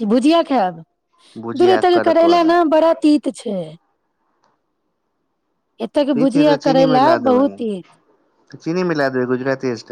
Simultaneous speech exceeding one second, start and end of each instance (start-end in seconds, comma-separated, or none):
6.1-7.6